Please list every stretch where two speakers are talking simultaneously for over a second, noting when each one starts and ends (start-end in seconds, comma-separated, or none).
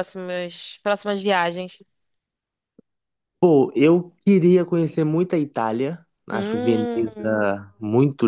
6.3-7.5